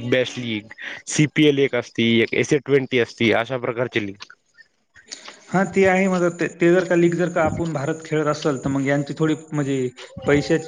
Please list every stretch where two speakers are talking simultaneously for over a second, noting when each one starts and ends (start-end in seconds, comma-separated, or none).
none